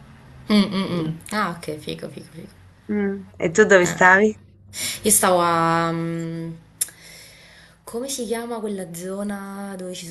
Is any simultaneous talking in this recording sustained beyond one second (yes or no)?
no